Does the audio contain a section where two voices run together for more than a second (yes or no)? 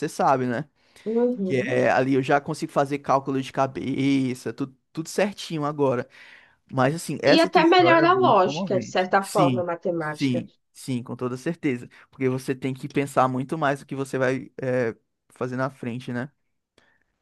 yes